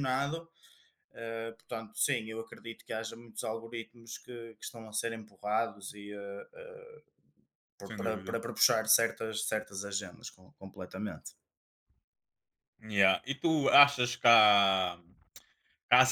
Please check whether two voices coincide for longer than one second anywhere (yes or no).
no